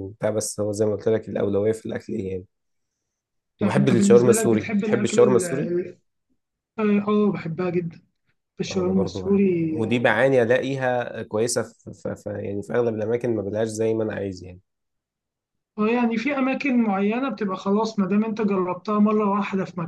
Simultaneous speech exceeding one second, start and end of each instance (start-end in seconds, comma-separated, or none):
3.6-5.7, 8.7-10.1